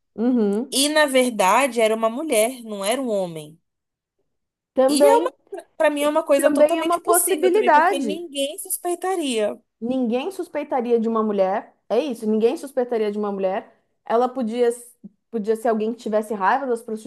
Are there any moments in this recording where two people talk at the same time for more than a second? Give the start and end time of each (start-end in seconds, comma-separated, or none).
6.0-8.2